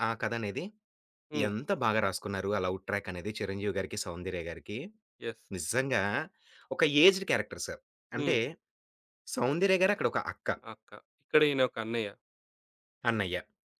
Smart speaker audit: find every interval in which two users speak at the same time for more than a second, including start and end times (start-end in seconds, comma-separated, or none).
none